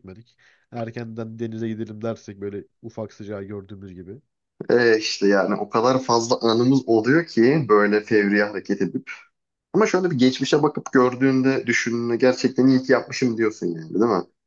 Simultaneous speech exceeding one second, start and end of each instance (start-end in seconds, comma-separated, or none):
none